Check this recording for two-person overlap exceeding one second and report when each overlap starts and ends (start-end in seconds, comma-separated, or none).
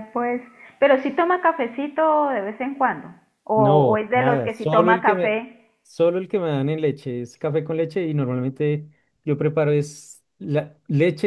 3.5-5.4